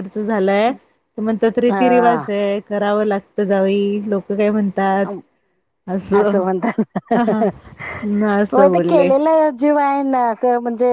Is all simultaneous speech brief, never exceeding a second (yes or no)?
yes